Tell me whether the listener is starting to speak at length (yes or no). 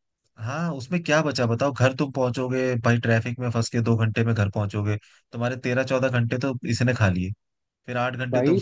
no